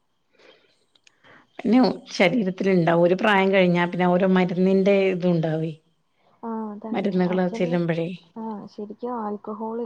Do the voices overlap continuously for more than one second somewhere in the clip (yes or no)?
no